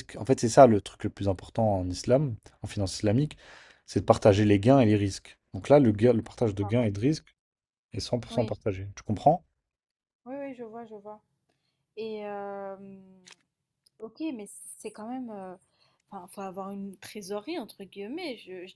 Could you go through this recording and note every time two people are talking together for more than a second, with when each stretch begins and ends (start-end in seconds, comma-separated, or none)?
none